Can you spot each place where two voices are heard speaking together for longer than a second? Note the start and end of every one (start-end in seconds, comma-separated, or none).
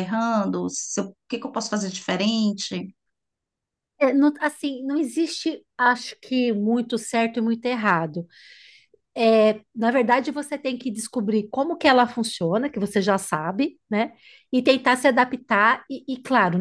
none